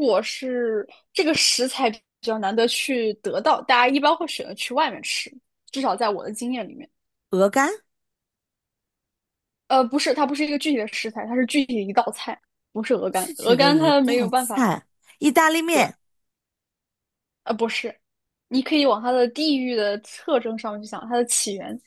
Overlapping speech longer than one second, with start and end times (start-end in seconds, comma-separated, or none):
13.1-14.6